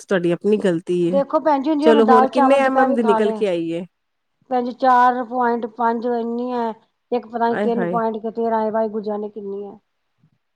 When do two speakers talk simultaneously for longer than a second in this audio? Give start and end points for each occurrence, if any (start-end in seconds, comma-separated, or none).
1.8-3.4